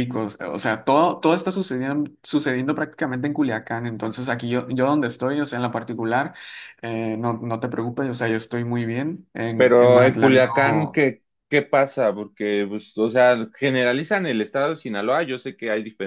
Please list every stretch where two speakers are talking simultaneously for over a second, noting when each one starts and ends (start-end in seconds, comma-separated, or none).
9.6-11.0